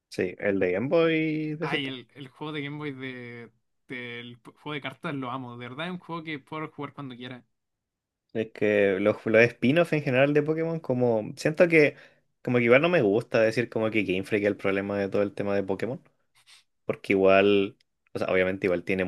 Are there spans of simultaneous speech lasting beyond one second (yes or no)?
no